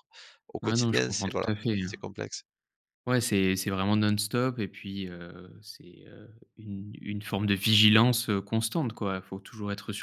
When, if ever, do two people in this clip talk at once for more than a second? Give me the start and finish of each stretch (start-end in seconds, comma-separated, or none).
0.6-2.0